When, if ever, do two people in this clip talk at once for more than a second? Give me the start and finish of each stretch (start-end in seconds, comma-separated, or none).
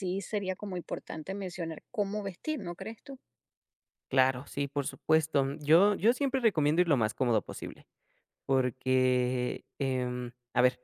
none